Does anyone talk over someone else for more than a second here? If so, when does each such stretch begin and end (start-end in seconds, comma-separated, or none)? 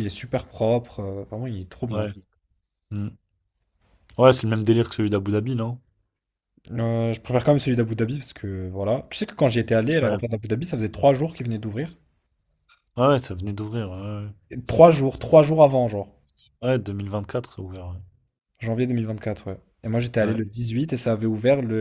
none